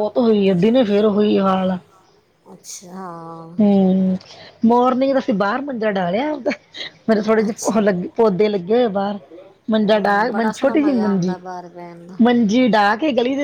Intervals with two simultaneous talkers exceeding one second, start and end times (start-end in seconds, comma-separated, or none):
9.8-11.3